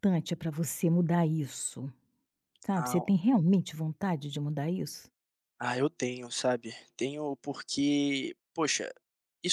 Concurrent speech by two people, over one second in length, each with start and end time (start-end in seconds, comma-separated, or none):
none